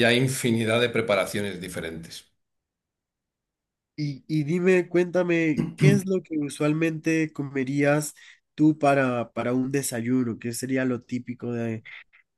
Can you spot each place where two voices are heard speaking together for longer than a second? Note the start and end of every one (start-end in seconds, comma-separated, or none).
none